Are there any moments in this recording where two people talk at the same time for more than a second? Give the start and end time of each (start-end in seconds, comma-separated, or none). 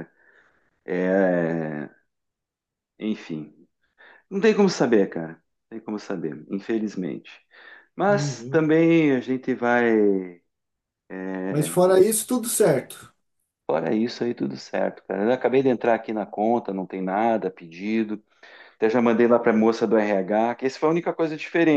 none